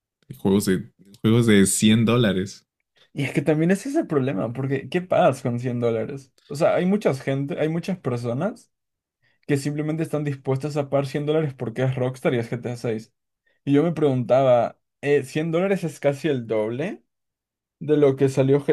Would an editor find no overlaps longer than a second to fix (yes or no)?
yes